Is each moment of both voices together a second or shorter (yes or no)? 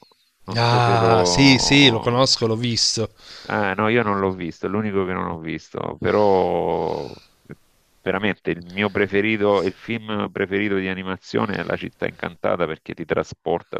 no